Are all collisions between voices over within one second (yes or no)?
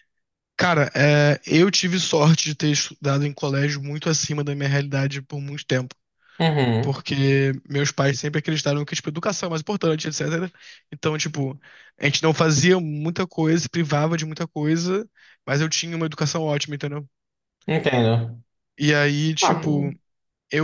yes